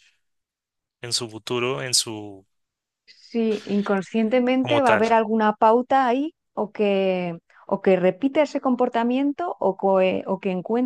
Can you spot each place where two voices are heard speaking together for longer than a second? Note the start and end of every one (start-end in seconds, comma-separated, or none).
none